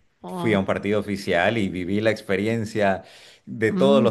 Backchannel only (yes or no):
yes